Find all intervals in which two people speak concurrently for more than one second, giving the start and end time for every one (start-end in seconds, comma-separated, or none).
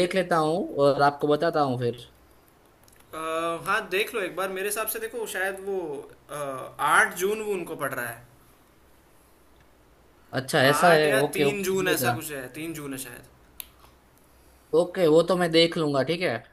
10.7-12.1